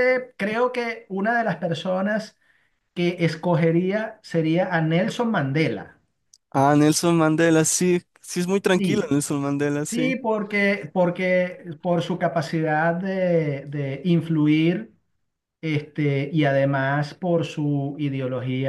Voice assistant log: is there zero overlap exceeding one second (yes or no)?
yes